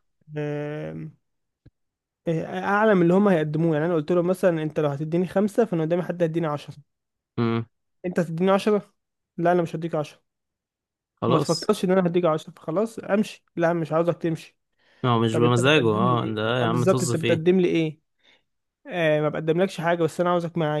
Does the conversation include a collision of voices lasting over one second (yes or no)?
yes